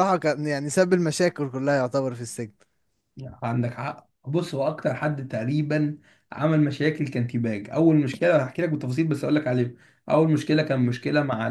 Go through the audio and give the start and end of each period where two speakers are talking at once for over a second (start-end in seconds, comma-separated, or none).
none